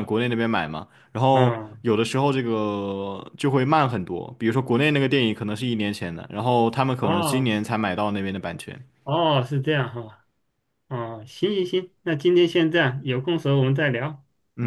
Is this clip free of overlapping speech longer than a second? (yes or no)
yes